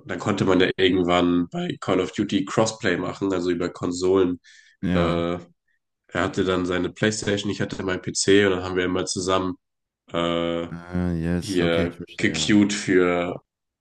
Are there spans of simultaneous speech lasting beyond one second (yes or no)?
yes